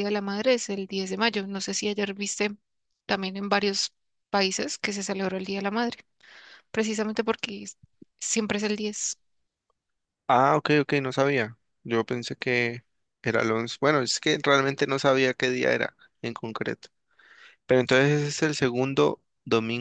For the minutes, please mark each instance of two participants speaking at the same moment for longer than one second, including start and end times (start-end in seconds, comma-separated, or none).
none